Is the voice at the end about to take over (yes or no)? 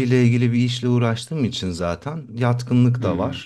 no